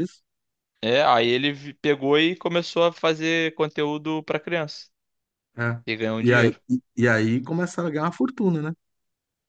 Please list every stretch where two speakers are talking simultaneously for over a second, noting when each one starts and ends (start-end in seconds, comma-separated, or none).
none